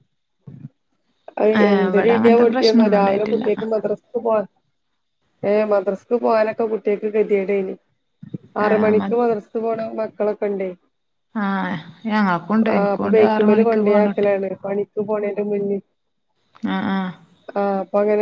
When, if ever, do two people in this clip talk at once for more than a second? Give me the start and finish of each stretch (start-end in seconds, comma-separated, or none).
1.6-3.4, 12.7-14.3